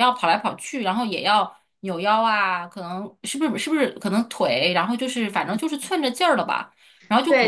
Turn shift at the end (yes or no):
yes